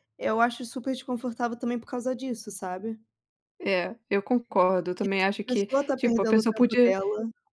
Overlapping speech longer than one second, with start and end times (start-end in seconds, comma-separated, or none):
5.3-7.0